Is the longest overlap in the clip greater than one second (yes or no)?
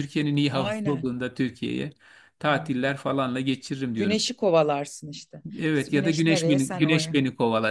yes